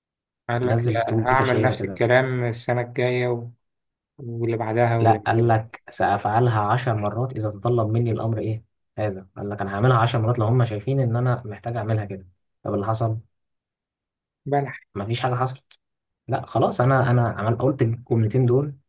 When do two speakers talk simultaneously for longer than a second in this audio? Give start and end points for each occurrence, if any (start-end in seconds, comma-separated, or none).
0.6-2.0